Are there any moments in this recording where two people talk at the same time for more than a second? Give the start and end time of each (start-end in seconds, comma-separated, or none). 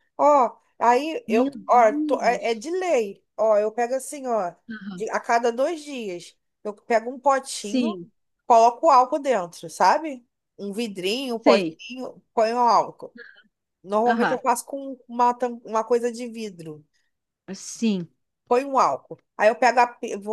1.3-2.6